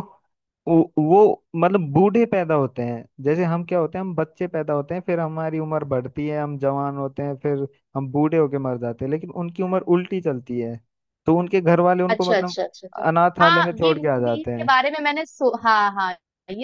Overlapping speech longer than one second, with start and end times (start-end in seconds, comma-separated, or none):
13.4-14.8